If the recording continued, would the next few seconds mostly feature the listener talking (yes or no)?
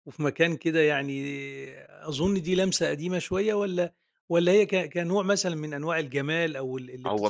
yes